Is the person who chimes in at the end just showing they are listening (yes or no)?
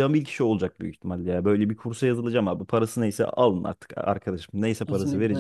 no